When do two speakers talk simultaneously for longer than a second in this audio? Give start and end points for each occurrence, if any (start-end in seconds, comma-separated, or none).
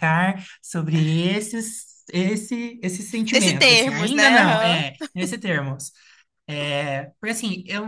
3.3-4.8